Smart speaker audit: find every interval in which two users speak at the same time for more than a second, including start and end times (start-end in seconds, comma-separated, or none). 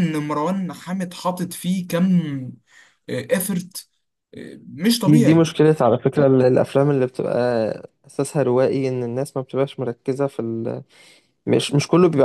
none